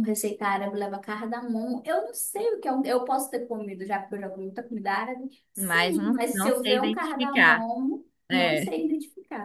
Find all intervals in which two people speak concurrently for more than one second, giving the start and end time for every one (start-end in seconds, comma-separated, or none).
5.5-7.7